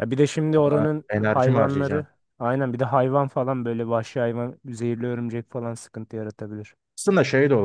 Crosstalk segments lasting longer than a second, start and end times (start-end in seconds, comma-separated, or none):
0.6-2.1